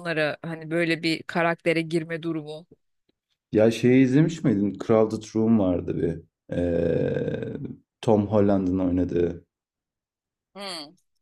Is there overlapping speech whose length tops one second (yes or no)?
no